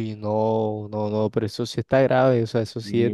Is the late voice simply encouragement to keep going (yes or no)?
no